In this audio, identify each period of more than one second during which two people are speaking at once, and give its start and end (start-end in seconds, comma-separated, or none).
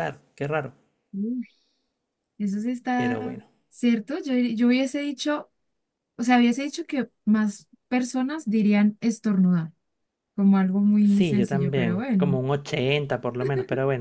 11.0-12.4